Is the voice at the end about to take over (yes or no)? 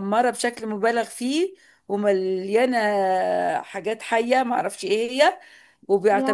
no